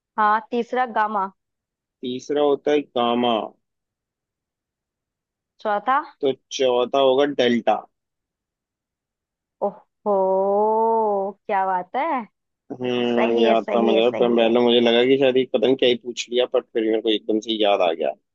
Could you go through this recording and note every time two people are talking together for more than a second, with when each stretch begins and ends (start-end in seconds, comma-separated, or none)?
13.1-14.5